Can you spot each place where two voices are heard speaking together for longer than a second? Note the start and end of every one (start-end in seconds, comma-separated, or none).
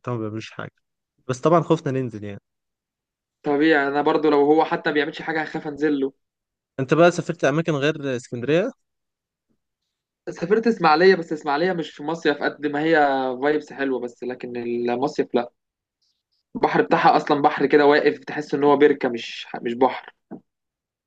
none